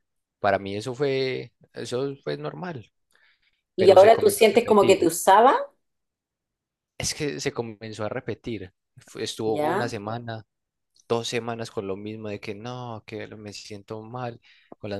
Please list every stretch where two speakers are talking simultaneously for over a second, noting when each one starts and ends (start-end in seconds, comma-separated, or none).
3.8-5.1